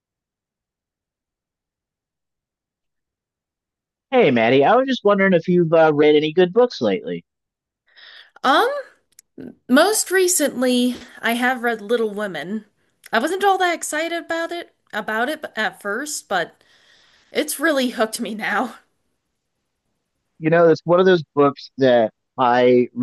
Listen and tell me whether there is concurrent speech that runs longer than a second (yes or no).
no